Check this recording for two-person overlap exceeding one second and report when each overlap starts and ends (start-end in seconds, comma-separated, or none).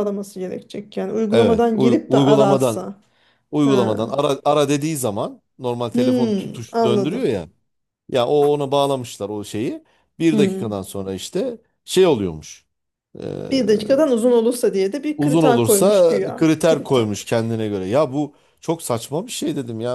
1.3-2.9, 5.9-7.5, 15.2-17.1